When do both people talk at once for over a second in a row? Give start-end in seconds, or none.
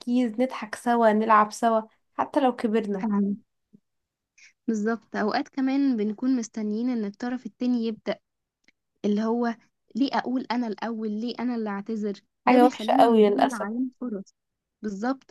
12.5-13.7